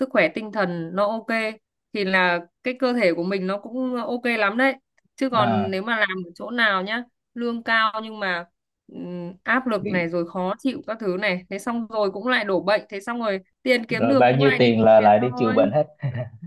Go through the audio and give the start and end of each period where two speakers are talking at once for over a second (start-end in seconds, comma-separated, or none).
13.9-15.7